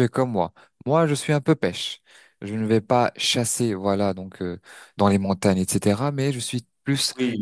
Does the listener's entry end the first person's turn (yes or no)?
no